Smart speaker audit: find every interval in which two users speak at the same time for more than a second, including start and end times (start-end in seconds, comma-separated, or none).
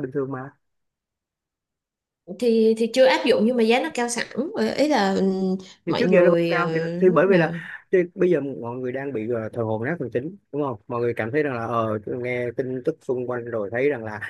5.9-7.5